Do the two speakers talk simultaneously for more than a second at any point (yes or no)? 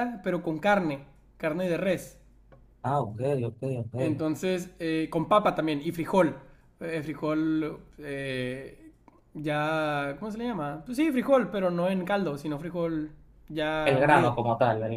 no